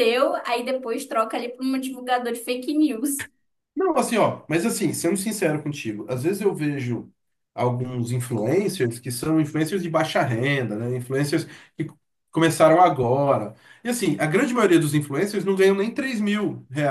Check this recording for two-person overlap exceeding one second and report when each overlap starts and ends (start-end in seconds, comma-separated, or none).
none